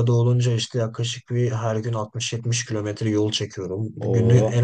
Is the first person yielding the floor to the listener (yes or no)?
no